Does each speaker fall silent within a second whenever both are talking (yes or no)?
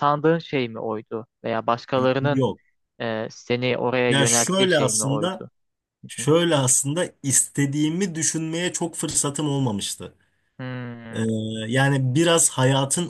no